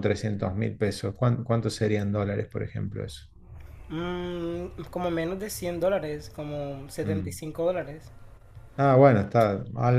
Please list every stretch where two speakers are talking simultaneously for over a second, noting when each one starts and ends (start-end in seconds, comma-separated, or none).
none